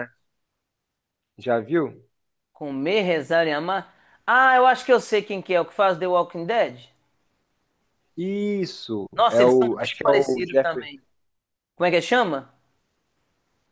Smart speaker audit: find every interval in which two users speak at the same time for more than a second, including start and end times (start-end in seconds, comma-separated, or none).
9.1-10.9